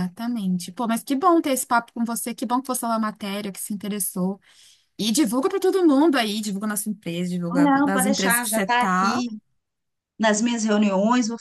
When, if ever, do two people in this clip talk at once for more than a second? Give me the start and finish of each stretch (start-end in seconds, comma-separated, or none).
7.5-9.2